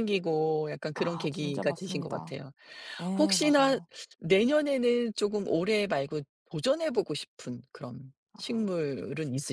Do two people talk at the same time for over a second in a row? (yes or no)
yes